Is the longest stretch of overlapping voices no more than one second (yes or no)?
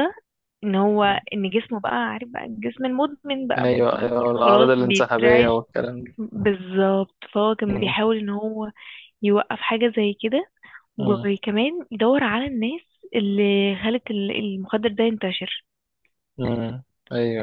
no